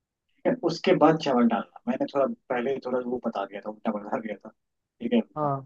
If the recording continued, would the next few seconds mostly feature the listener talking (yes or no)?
no